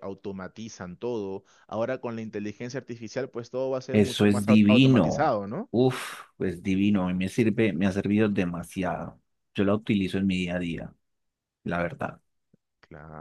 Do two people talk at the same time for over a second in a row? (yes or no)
yes